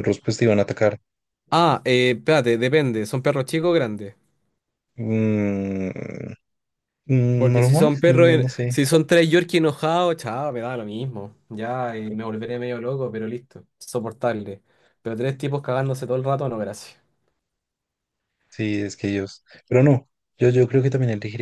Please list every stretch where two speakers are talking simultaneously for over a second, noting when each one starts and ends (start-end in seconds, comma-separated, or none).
7.4-8.8